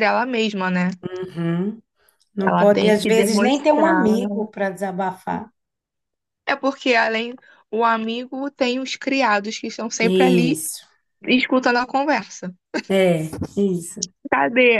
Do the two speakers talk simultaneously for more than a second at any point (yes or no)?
yes